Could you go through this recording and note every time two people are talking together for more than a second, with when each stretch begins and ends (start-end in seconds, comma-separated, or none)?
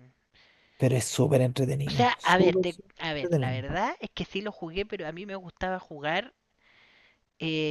1.9-3.6